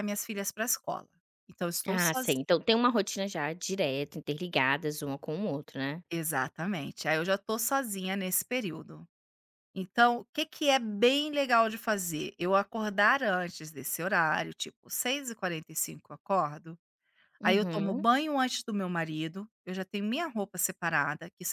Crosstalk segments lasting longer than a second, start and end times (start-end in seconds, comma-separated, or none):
none